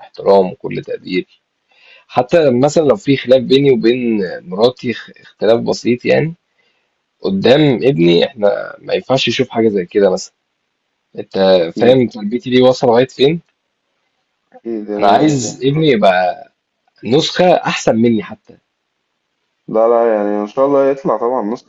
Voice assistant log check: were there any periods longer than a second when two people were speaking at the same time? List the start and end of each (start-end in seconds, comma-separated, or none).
none